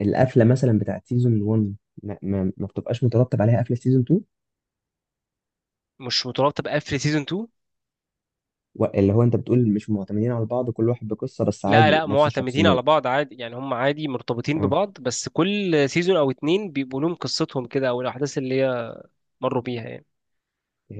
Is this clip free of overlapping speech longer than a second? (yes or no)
no